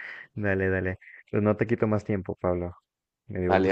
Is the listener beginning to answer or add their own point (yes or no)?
yes